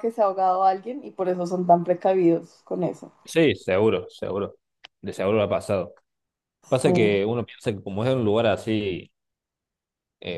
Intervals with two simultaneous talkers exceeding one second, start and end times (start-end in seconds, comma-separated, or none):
none